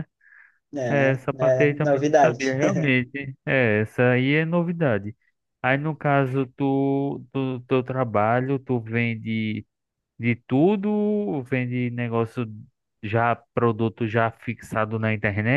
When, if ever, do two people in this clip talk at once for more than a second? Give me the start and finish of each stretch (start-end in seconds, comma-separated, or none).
0.9-2.6